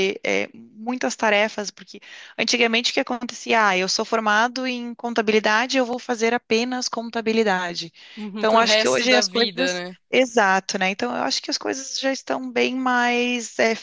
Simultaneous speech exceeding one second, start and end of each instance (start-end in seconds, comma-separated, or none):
8.4-10.0